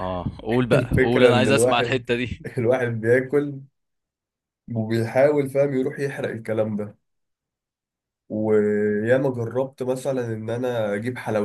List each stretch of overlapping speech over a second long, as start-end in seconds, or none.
0.7-2.0